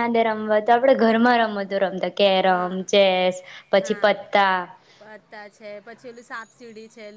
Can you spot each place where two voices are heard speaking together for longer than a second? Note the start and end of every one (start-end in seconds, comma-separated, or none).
none